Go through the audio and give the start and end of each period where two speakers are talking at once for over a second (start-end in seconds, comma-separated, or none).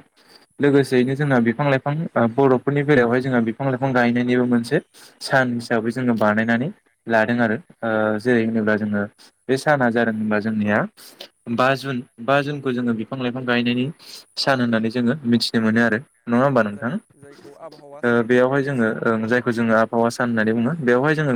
16.4-18.9